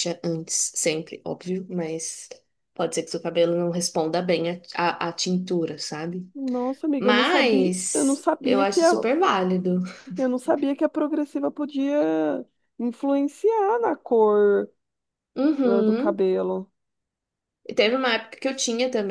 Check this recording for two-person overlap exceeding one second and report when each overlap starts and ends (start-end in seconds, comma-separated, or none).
7.0-8.9